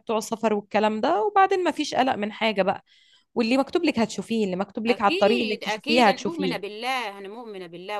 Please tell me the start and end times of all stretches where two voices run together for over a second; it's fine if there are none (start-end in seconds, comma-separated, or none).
4.9-6.7